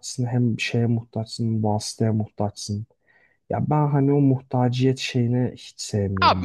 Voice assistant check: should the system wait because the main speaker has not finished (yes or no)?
no